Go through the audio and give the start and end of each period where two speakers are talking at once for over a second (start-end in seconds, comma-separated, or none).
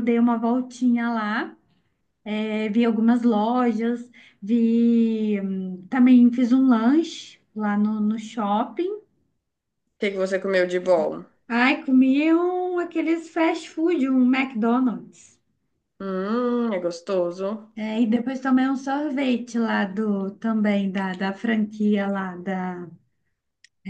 none